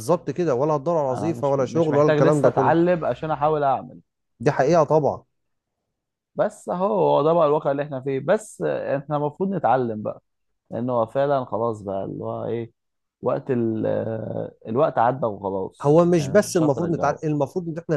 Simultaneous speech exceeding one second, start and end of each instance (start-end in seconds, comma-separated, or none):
1.1-2.7, 15.8-17.2